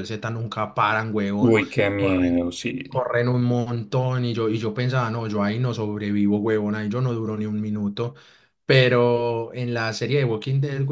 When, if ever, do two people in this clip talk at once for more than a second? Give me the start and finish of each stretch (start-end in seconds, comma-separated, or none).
none